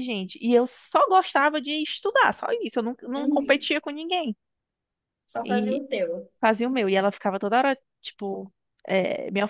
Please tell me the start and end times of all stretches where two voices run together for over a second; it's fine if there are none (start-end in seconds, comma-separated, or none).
none